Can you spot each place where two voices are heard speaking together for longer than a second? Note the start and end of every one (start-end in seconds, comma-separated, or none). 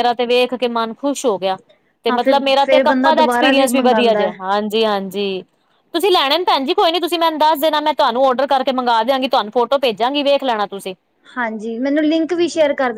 2.1-4.3